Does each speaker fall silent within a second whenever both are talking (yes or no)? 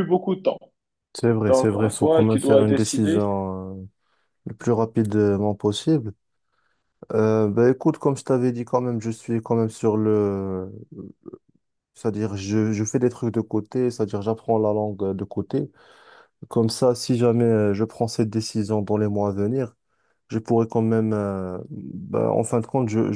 no